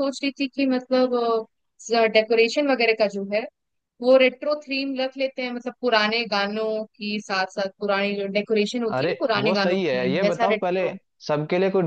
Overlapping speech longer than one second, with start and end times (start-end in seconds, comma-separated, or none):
9.0-10.9